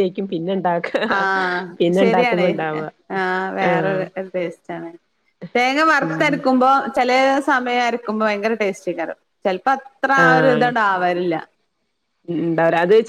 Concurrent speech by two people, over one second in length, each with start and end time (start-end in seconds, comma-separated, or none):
none